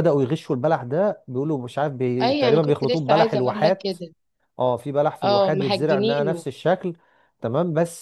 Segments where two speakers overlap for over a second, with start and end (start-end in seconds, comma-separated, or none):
2.2-4.0, 5.2-6.4